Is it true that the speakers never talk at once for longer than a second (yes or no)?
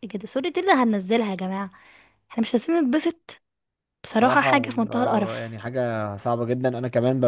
no